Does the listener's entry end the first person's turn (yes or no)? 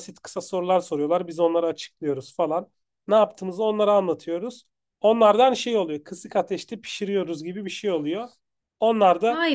no